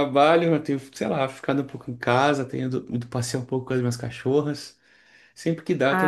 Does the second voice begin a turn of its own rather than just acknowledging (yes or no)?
no